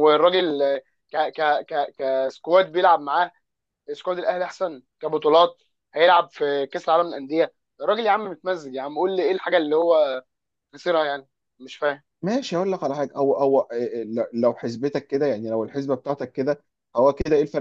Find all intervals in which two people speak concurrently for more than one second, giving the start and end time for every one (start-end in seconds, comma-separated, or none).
none